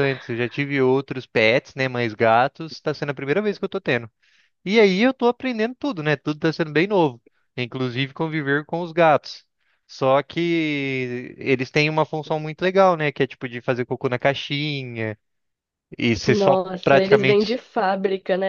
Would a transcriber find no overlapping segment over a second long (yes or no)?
no